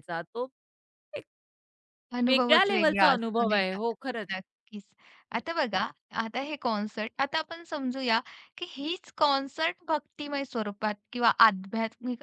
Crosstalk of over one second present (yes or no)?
yes